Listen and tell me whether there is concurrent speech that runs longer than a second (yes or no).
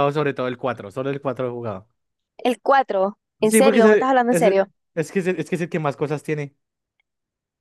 yes